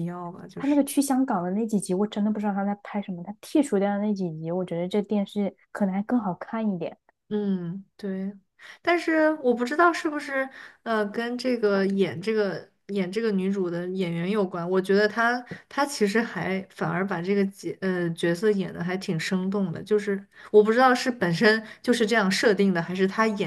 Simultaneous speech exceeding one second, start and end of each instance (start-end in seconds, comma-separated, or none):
none